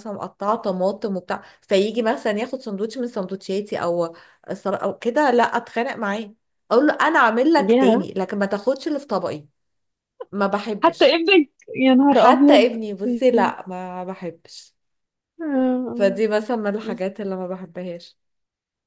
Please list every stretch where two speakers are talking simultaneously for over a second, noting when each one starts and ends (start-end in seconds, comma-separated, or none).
12.1-13.5